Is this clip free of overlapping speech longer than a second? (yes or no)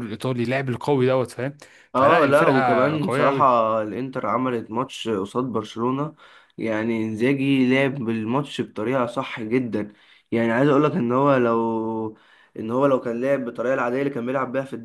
no